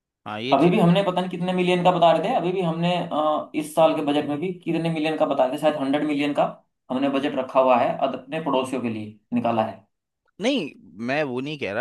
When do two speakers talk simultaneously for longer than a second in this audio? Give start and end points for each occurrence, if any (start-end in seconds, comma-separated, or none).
none